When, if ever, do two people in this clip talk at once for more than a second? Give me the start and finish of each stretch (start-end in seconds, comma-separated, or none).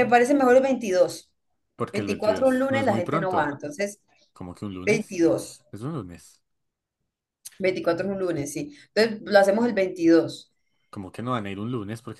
1.9-3.5